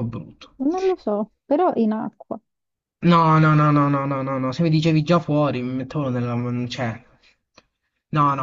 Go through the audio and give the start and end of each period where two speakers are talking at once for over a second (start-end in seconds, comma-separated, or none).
none